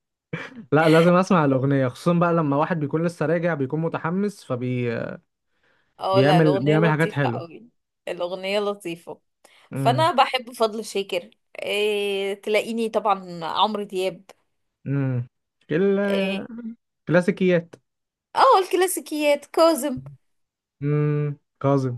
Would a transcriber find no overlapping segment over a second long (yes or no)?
no